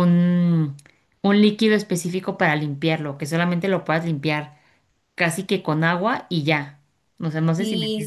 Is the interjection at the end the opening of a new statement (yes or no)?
yes